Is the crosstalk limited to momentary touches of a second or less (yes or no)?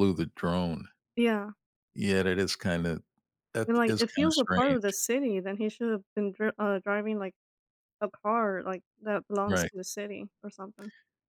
no